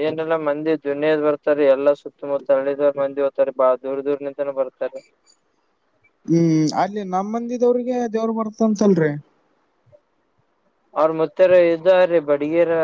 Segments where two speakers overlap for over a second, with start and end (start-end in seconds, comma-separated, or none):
none